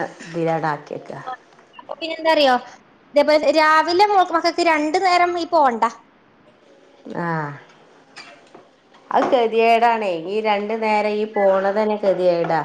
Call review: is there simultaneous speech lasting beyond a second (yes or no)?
no